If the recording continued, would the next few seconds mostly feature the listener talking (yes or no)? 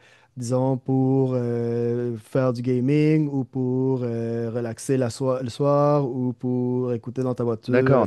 yes